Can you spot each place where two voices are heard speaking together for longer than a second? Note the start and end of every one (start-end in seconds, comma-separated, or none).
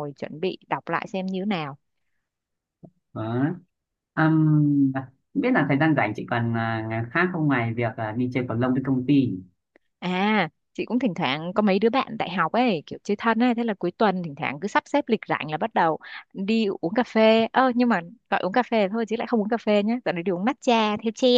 none